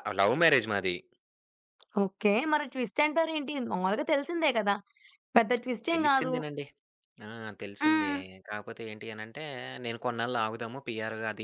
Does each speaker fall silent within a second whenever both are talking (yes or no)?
yes